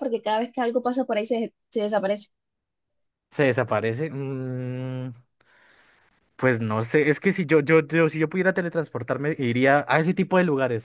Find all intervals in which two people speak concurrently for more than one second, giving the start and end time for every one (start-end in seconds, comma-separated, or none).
none